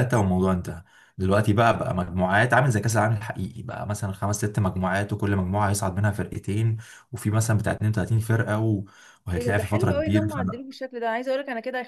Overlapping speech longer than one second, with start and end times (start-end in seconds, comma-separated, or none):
9.4-10.6